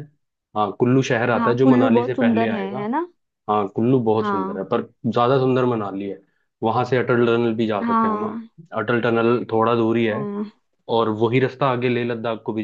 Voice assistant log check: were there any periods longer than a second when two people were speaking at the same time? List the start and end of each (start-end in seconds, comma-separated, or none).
1.4-2.8